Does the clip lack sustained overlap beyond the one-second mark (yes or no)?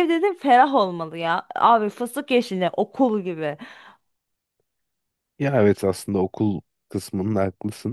yes